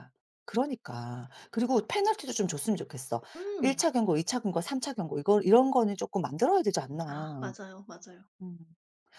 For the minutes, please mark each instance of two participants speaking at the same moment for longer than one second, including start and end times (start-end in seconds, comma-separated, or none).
none